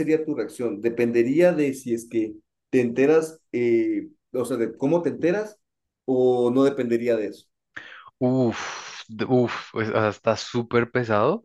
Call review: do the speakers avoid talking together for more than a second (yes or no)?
yes